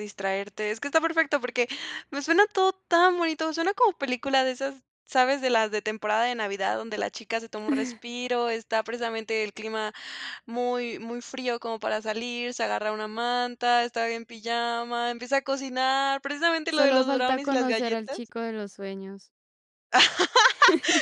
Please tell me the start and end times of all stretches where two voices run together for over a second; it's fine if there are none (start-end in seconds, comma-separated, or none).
16.7-18.2